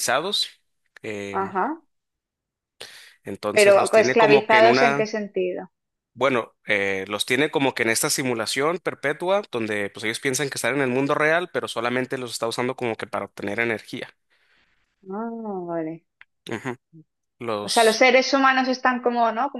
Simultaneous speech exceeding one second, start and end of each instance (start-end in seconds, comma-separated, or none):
3.5-5.1